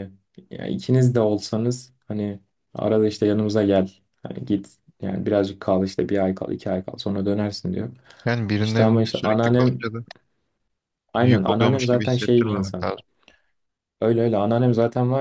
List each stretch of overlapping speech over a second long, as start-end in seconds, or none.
8.6-9.8, 11.2-12.9